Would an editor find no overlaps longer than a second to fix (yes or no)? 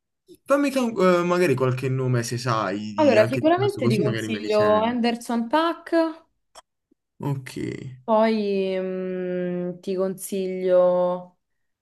no